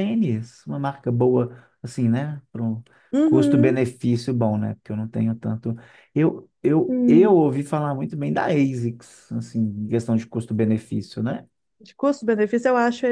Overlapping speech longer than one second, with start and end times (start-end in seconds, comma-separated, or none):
none